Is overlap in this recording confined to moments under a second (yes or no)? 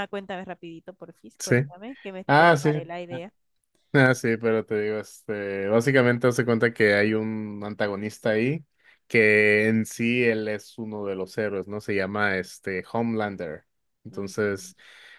yes